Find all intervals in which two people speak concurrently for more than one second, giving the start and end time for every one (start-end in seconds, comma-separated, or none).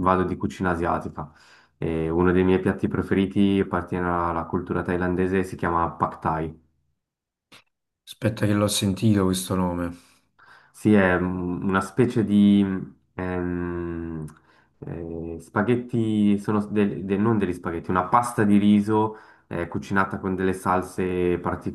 none